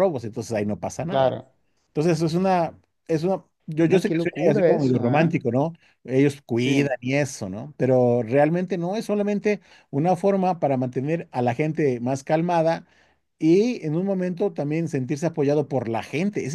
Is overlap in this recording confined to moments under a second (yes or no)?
no